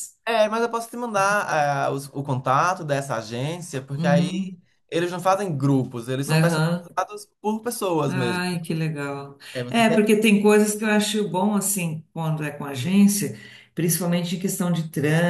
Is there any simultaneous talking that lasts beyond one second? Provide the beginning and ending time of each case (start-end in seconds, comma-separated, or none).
none